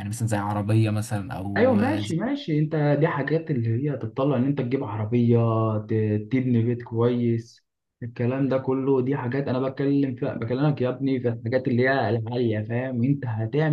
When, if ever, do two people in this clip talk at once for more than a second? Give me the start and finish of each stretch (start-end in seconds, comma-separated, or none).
none